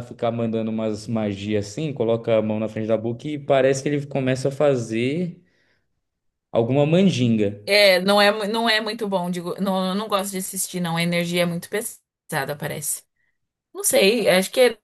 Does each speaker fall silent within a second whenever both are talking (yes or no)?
yes